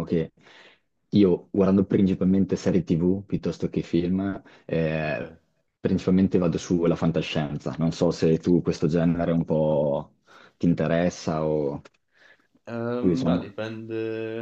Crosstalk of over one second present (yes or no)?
no